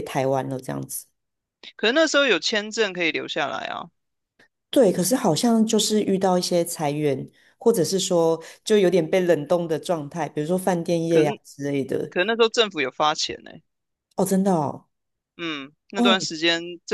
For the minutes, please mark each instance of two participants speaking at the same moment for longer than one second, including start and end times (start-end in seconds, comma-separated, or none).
none